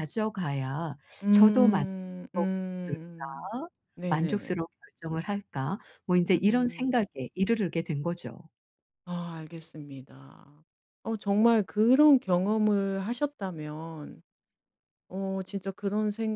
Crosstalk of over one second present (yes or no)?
yes